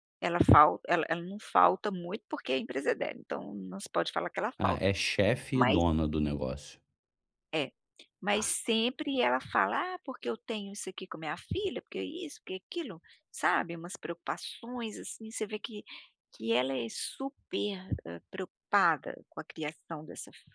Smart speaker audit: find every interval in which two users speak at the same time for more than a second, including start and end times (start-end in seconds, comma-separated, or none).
none